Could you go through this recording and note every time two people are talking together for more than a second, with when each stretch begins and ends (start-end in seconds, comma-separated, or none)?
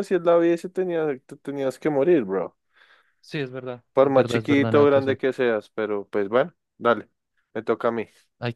3.9-5.2